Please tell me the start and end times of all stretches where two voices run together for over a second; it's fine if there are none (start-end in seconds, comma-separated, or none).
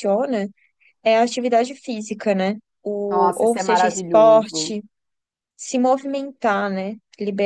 3.1-4.7